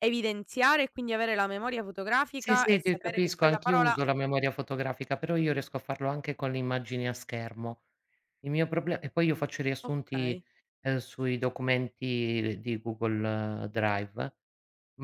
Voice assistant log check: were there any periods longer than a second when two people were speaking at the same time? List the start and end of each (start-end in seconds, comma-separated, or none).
2.4-4.0